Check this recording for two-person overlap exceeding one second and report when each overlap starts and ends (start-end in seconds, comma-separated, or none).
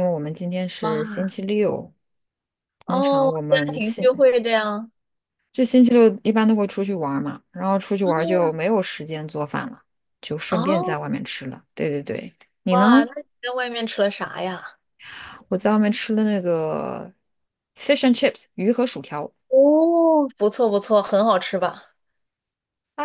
2.9-4.1